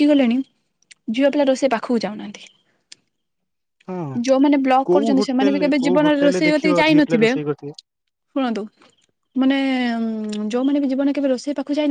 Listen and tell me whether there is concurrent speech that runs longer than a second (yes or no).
yes